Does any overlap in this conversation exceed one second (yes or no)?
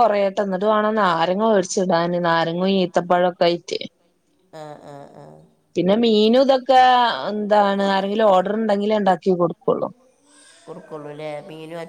no